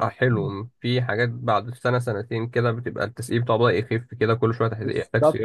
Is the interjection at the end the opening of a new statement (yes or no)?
yes